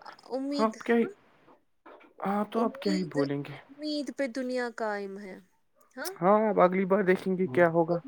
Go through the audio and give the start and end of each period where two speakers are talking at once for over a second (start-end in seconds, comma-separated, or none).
none